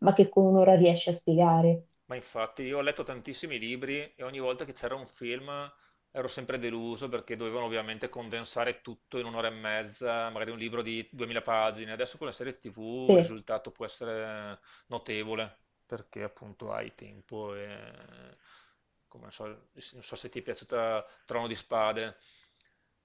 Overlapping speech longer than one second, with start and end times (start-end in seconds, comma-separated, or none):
none